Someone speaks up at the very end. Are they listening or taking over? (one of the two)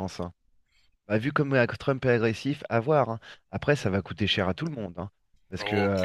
taking over